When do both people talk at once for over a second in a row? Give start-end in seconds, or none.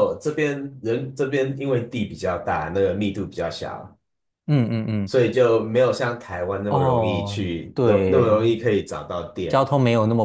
6.7-8.4